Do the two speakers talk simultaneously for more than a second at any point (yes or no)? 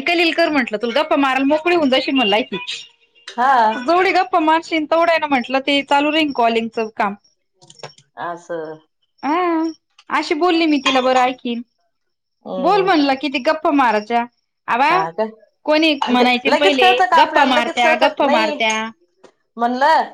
yes